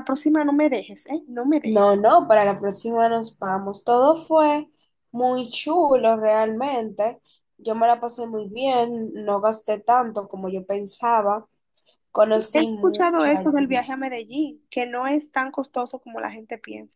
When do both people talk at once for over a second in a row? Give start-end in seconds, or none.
12.5-13.8